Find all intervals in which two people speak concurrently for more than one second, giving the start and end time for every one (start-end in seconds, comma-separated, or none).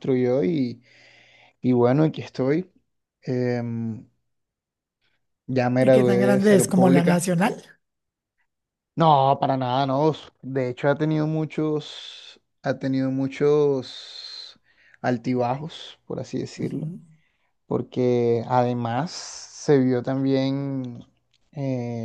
5.8-7.2